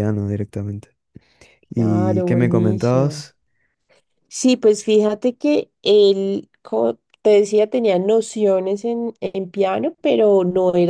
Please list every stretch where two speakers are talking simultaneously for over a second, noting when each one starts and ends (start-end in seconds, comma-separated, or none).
1.7-3.2